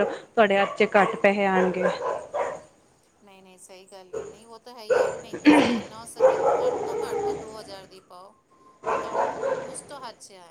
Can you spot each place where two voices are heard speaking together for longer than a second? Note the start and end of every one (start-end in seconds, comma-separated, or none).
none